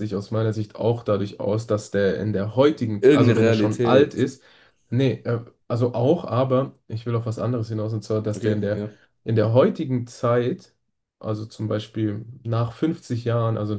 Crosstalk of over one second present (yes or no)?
yes